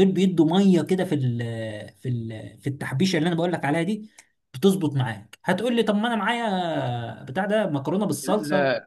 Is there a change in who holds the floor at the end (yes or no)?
yes